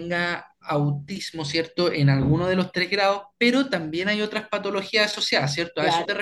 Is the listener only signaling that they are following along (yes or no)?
no